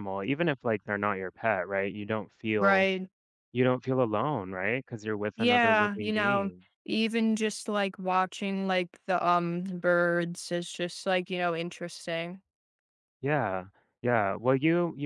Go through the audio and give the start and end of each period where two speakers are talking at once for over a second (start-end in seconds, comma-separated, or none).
5.3-6.7